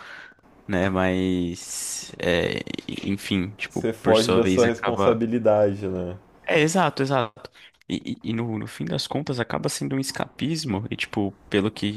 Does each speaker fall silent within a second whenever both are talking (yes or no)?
no